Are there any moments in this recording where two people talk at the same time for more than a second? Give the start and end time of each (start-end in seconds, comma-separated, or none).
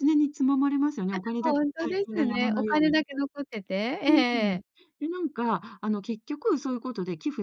1.1-3.0